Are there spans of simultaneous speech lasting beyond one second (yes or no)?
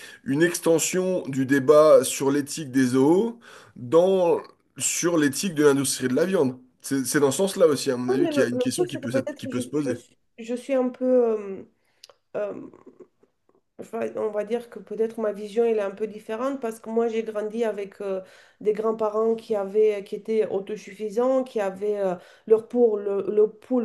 yes